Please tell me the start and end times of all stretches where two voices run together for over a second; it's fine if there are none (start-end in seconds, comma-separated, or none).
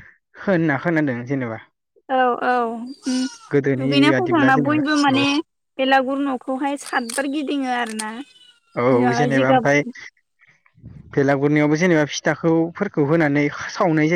3.5-5.2